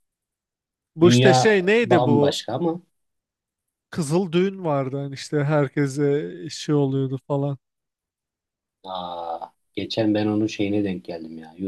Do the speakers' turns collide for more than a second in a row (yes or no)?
yes